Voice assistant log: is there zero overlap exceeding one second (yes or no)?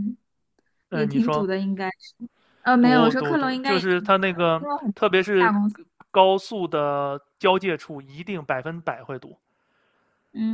no